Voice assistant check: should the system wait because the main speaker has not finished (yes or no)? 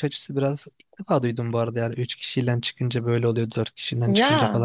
yes